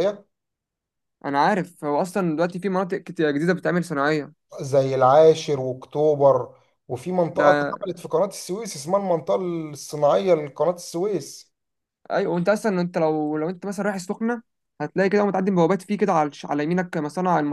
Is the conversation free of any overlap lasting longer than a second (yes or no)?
yes